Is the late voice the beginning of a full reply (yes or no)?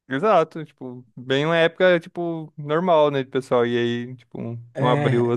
yes